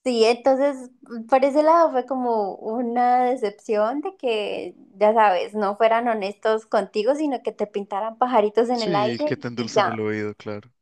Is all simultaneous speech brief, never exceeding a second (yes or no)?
no